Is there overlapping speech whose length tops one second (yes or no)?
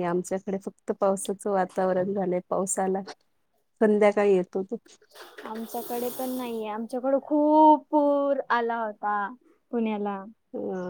no